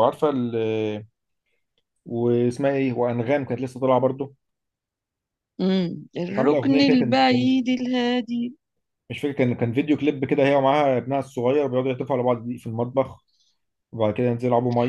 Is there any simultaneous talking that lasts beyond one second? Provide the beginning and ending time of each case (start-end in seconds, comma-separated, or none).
6.3-7.5